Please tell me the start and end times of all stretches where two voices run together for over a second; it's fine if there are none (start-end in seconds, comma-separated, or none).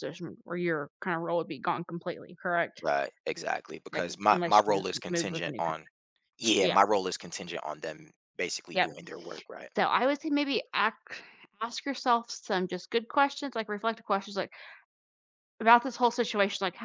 3.9-5.9